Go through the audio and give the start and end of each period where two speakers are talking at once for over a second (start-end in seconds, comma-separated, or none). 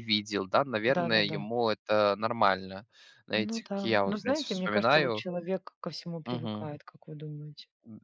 3.3-5.2